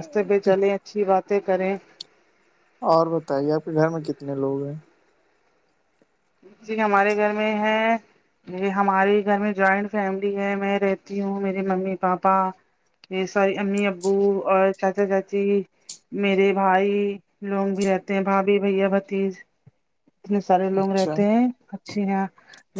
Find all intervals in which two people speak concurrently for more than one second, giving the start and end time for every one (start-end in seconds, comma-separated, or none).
none